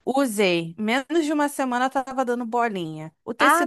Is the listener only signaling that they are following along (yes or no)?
yes